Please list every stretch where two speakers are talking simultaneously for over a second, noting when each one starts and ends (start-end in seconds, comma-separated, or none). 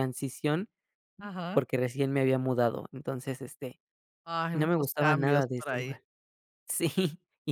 4.5-6.0